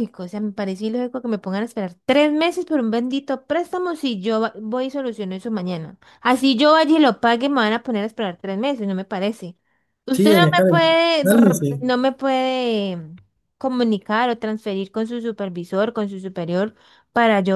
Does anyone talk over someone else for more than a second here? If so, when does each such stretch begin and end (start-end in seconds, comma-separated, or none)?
10.1-11.8